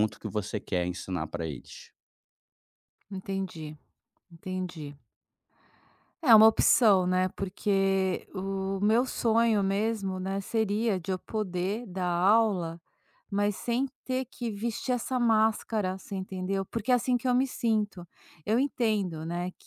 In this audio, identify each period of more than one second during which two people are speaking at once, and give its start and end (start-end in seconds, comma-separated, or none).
none